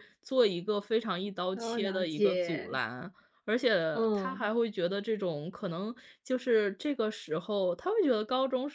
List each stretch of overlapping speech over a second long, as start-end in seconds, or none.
1.5-2.8